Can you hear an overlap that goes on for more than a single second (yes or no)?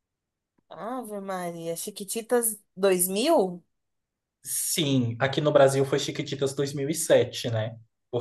no